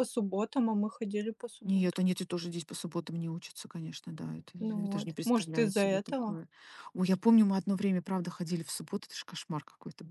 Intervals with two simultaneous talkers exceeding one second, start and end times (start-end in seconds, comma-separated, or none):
4.6-6.4